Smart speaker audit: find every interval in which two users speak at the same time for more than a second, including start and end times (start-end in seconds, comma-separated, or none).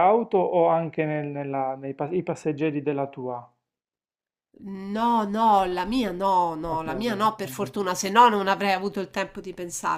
none